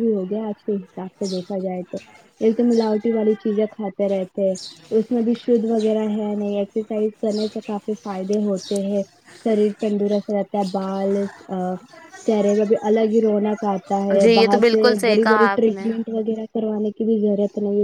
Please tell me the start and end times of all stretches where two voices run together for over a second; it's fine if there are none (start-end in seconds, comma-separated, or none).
13.9-15.9